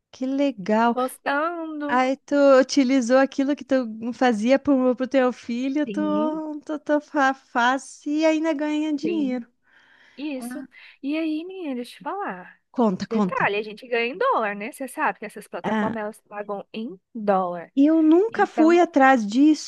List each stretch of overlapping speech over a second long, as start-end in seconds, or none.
none